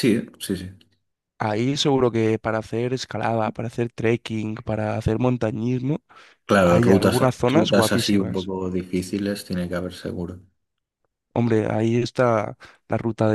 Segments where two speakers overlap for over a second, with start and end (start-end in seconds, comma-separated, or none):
6.6-8.5